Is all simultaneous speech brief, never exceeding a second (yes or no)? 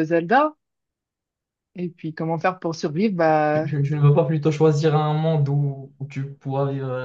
yes